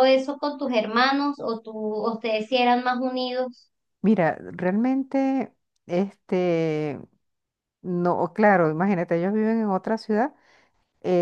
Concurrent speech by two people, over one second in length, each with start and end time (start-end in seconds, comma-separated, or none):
none